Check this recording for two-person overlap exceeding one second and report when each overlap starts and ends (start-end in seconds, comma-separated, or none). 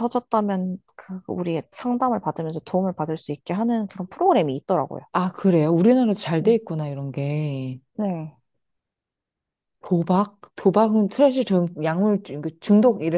none